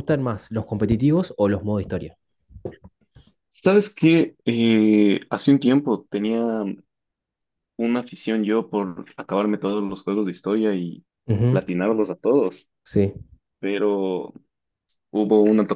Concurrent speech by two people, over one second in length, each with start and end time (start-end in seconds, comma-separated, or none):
none